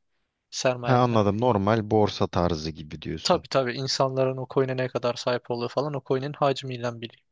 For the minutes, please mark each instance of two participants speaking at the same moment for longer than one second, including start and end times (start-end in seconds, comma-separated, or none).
none